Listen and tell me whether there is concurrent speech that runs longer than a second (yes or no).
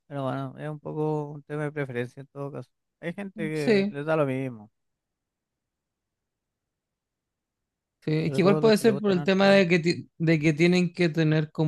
yes